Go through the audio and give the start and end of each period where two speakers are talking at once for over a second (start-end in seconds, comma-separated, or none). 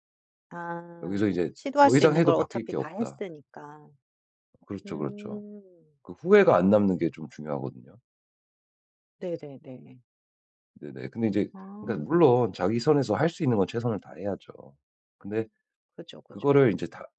1.0-3.2